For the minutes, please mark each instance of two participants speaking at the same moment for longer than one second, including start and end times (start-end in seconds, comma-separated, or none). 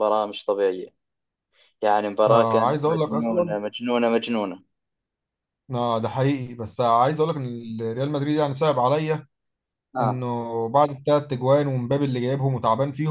2.3-3.6